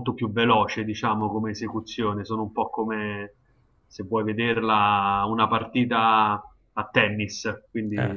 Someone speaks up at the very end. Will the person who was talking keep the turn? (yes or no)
yes